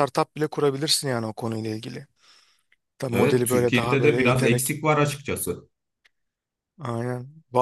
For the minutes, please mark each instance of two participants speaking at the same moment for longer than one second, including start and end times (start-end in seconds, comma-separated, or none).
3.1-4.8